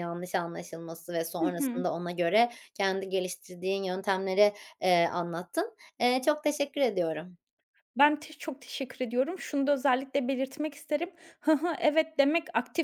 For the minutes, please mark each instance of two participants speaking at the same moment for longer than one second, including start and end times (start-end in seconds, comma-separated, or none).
none